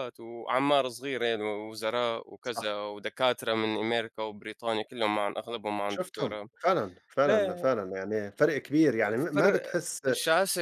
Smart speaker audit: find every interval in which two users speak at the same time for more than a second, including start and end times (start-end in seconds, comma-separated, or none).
none